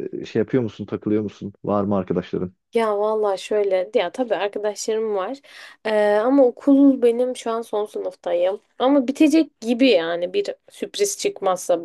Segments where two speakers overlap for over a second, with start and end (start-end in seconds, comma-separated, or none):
none